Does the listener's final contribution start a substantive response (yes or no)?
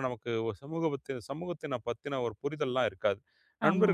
no